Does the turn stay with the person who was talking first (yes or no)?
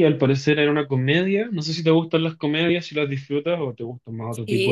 no